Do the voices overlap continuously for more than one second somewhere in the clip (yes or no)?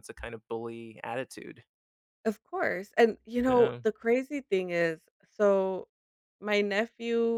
no